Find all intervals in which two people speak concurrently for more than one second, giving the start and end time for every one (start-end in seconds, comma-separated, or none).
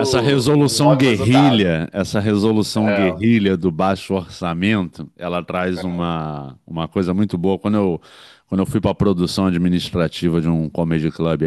0.5-1.8